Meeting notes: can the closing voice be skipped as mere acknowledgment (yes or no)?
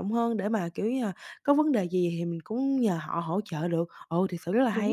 no